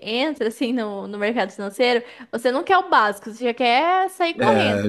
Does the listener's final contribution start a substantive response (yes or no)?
yes